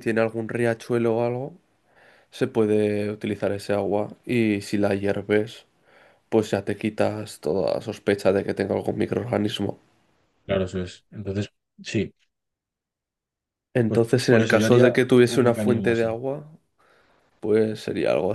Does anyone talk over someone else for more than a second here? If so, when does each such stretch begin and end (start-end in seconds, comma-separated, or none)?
13.9-16.2